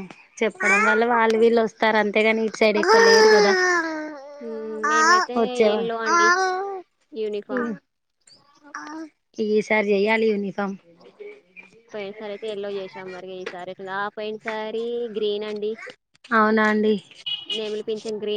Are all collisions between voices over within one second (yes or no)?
yes